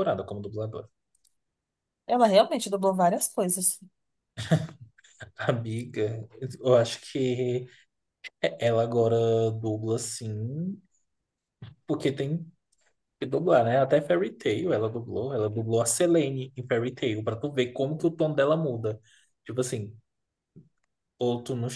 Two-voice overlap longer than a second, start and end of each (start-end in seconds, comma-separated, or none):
none